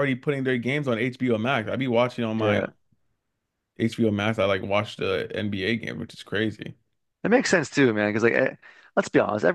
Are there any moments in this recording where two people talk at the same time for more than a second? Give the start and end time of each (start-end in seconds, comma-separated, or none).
none